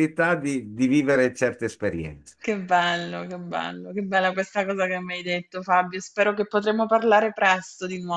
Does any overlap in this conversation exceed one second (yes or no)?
no